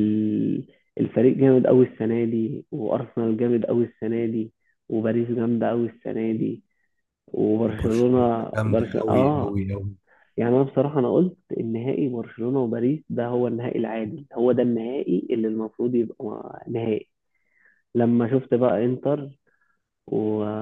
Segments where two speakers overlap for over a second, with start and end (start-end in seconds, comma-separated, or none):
7.8-9.5